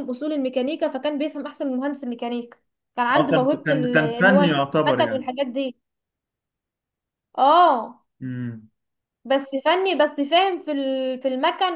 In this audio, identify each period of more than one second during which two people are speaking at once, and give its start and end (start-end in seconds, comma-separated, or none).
3.2-5.3